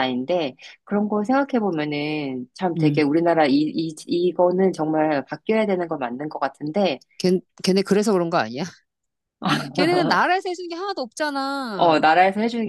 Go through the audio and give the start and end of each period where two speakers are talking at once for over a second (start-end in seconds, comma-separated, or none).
none